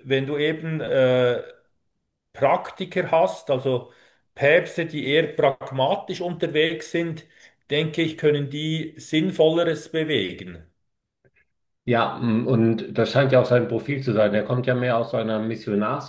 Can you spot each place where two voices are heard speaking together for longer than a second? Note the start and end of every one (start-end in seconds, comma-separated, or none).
none